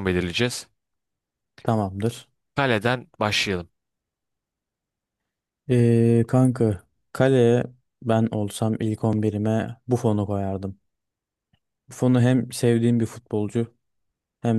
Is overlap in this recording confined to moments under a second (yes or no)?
yes